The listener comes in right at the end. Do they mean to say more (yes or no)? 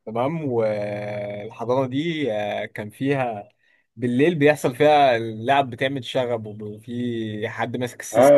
yes